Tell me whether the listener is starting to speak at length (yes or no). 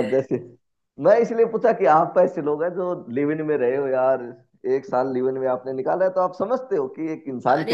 yes